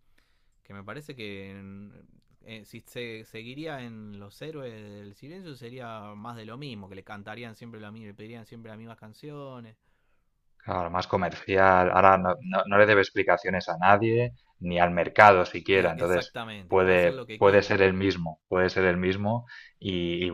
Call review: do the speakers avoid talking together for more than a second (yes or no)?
no